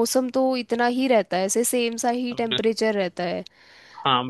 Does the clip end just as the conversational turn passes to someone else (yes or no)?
yes